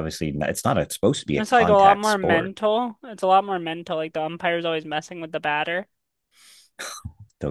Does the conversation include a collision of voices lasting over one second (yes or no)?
yes